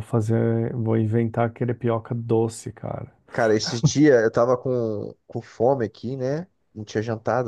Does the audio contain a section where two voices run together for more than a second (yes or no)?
no